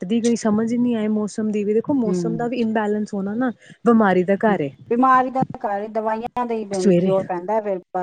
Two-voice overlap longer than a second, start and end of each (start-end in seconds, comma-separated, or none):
none